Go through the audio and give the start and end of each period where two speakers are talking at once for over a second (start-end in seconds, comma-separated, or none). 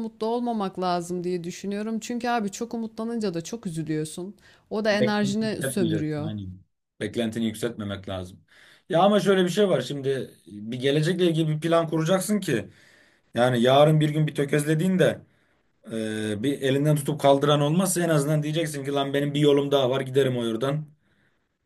4.9-6.3